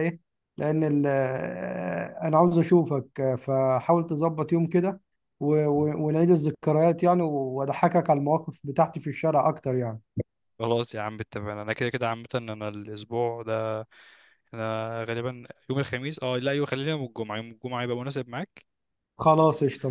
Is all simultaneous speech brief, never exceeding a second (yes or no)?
yes